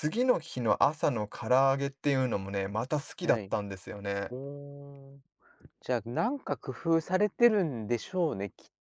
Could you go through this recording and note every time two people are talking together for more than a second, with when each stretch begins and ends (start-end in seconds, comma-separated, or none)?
none